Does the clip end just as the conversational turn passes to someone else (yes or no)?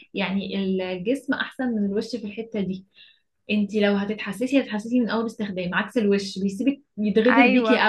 yes